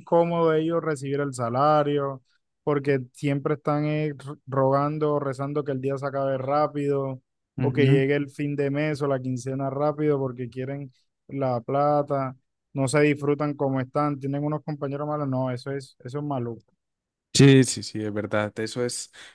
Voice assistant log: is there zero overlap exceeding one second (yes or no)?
yes